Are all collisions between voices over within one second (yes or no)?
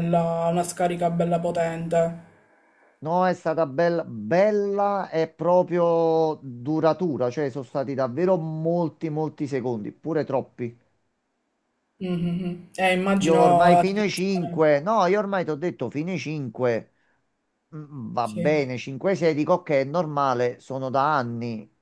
no